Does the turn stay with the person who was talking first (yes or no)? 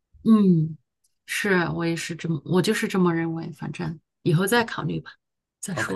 no